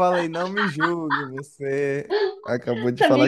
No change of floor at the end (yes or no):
no